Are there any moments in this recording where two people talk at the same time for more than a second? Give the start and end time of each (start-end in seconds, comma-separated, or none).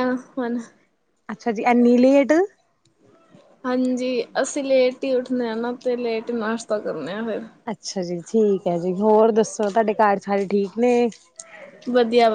none